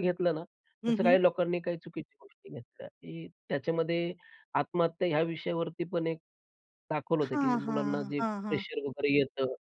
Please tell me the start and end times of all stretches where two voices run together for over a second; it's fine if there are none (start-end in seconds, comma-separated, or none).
7.2-8.6